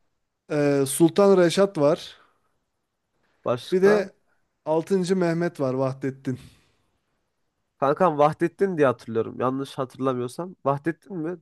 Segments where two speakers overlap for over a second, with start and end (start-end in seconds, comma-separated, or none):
none